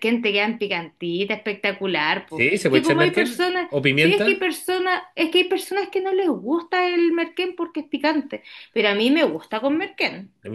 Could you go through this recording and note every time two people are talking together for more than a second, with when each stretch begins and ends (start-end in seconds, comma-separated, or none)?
2.2-4.2